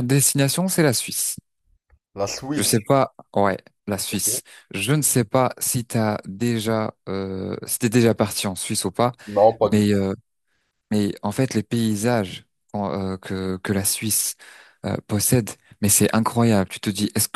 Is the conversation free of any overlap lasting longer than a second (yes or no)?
yes